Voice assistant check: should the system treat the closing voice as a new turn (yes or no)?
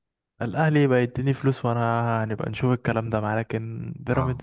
yes